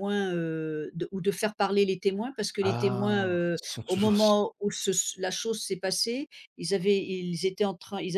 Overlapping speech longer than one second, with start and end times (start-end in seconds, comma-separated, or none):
2.6-4.3